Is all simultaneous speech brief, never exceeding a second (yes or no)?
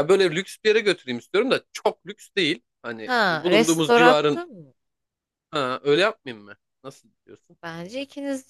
no